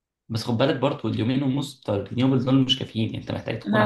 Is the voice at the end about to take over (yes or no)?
yes